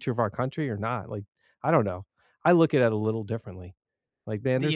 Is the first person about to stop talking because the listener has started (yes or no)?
no